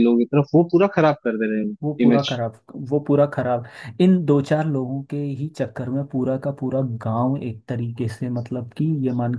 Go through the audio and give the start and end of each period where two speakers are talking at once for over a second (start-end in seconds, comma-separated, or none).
none